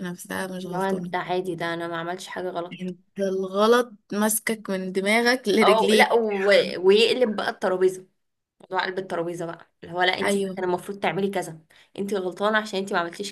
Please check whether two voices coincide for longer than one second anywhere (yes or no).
no